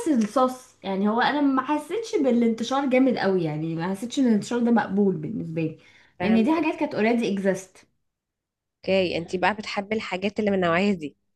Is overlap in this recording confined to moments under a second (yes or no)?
yes